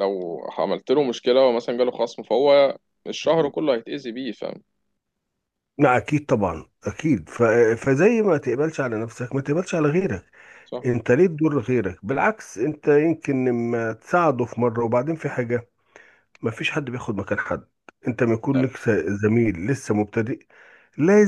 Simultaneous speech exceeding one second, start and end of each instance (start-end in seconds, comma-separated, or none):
none